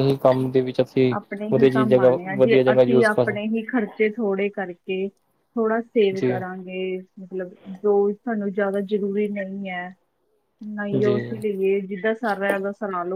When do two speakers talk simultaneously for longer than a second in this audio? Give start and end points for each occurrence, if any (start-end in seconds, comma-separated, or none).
1.5-3.4